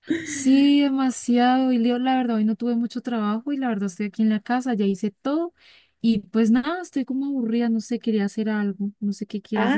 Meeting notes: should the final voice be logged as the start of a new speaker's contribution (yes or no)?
yes